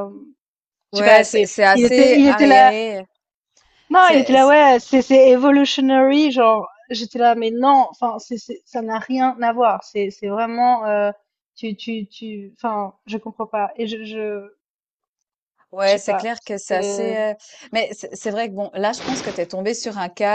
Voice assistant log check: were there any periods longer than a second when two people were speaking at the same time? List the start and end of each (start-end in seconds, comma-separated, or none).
0.9-2.7, 15.8-17.2